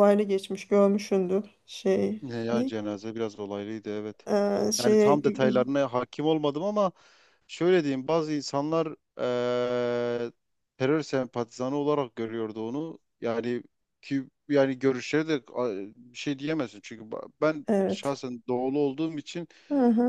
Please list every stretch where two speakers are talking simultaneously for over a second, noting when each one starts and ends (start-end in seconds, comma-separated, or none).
none